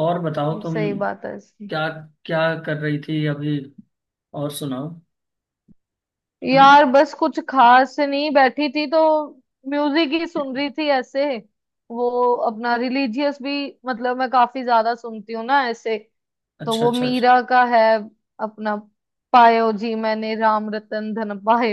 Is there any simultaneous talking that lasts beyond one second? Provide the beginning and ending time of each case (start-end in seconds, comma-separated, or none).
none